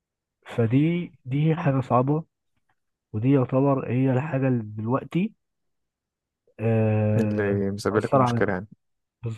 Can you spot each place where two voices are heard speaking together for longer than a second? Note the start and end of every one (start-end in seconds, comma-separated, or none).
7.2-8.6